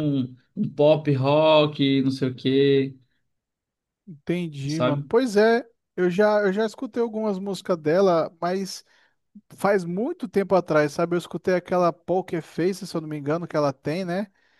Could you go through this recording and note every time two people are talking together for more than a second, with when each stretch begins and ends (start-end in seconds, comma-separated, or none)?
none